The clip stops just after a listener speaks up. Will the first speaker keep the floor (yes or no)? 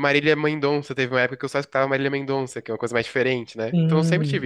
no